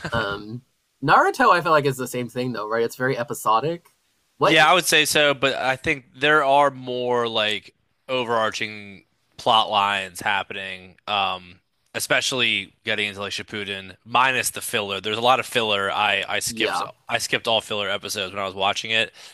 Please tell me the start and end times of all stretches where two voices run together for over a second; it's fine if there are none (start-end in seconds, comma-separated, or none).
none